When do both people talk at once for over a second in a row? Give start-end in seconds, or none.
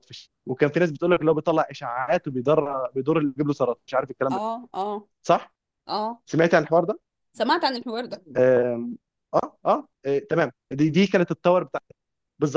none